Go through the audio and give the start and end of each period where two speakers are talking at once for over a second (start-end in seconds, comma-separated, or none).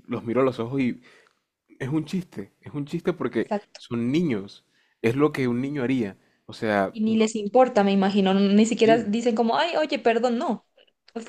none